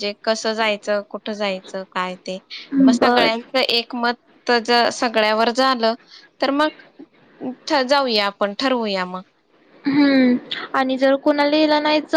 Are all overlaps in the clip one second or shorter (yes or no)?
yes